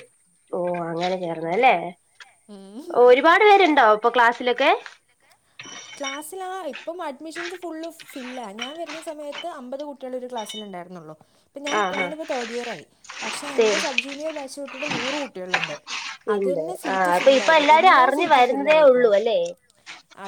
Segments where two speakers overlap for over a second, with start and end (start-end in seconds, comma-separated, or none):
16.4-19.1